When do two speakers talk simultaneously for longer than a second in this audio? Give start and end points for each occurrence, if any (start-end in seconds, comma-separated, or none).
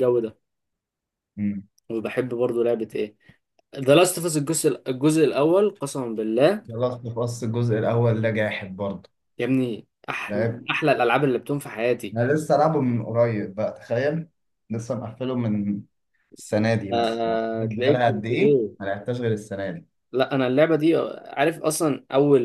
16.9-18.7